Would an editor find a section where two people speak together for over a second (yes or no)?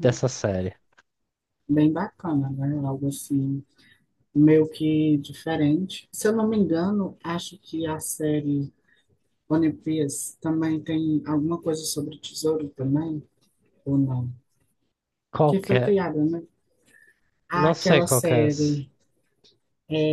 yes